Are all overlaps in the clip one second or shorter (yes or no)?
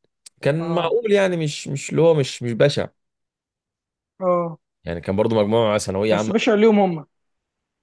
yes